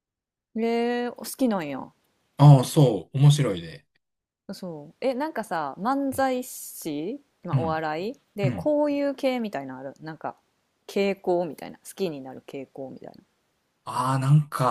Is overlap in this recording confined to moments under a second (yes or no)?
yes